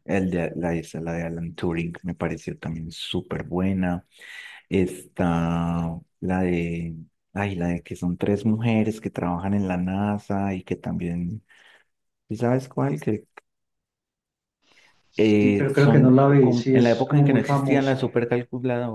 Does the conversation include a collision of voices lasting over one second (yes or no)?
yes